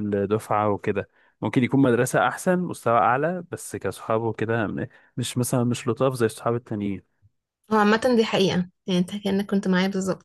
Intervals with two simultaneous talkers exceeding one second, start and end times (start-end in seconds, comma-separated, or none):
none